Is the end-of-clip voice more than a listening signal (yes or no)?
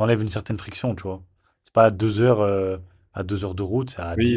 yes